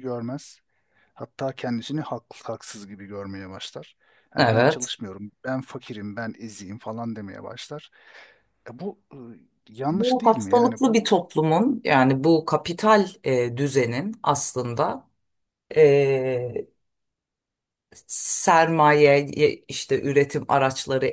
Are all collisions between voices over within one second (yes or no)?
no